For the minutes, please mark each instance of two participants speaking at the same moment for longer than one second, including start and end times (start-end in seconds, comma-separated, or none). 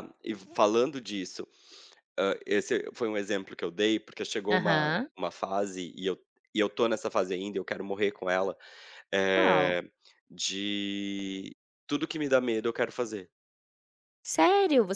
none